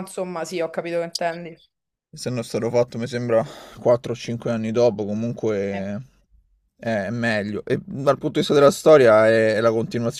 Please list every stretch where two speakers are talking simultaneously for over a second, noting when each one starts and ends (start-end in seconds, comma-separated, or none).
none